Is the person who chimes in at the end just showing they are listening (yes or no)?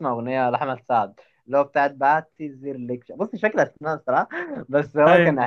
yes